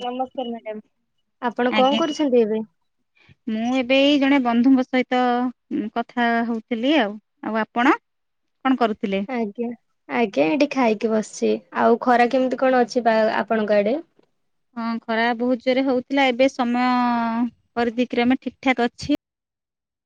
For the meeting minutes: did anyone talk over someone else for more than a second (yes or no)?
no